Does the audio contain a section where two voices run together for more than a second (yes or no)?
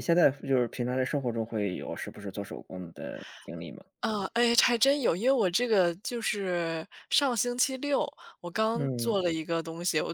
no